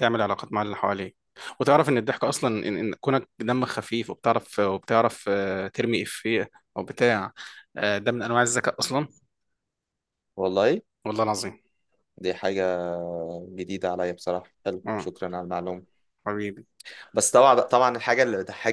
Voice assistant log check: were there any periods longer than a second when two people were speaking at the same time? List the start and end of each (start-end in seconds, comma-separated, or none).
none